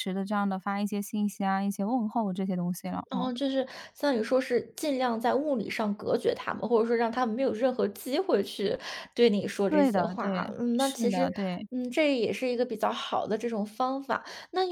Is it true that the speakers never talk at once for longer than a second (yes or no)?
no